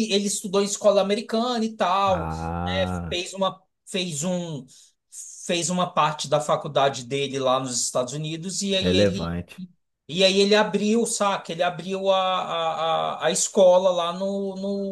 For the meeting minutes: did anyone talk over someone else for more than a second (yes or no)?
no